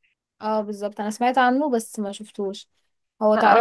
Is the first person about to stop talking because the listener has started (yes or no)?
yes